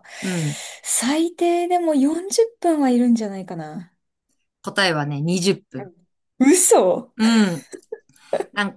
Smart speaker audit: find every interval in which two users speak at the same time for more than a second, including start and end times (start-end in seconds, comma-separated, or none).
none